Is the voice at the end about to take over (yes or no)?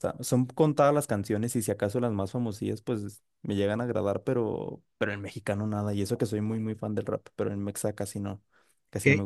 yes